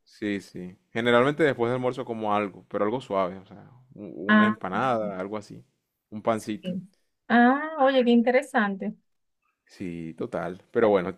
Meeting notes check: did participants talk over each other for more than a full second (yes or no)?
no